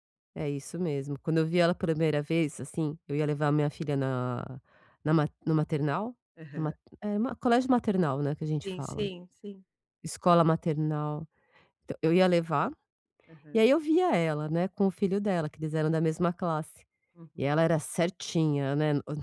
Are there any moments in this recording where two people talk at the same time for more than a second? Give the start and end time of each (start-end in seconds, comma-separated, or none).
none